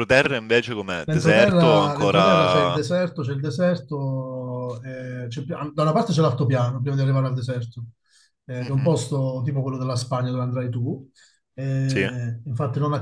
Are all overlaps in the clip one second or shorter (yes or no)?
no